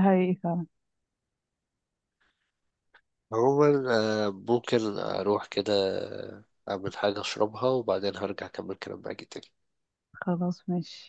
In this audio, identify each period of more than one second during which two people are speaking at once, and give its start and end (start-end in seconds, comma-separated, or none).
none